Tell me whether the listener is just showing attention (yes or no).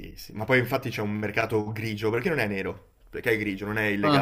yes